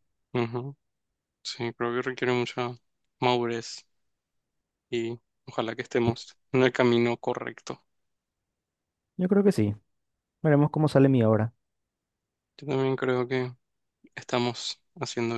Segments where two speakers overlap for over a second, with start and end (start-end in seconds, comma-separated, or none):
none